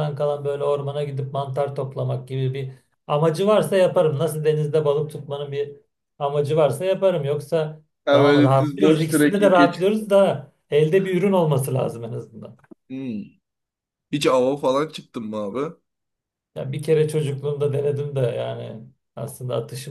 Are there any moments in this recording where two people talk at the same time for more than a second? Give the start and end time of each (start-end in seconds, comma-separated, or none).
8.1-9.8